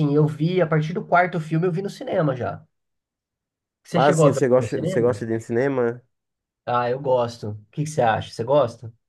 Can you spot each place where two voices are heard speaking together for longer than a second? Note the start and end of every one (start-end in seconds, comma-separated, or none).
3.9-5.2